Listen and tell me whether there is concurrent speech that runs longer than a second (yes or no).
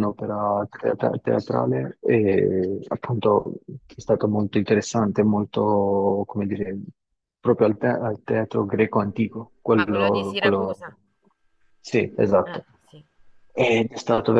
yes